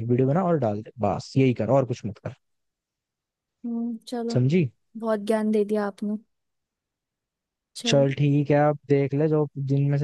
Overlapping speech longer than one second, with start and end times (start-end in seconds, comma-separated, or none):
none